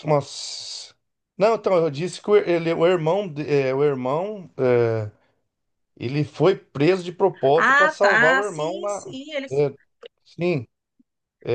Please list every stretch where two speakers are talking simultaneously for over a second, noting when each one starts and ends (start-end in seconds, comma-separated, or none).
7.6-9.2